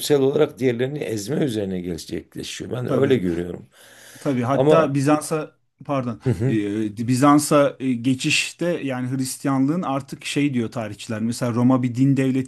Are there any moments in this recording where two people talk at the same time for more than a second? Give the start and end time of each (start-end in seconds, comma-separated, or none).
none